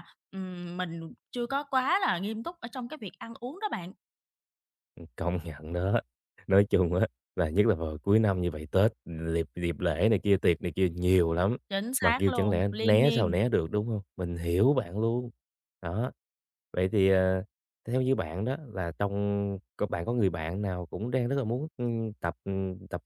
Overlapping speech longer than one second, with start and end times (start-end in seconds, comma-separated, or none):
12.0-13.4